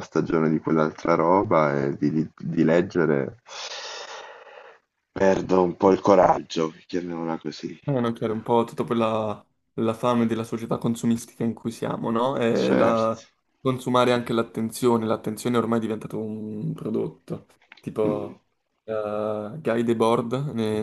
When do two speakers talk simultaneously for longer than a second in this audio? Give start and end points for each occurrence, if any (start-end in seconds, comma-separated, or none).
none